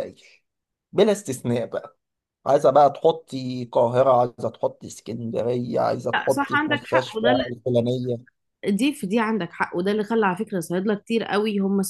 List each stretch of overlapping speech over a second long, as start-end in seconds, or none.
6.1-7.4